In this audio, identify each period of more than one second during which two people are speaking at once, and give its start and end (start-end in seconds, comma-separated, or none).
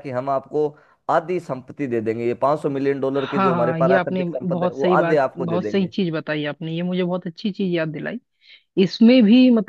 3.2-5.9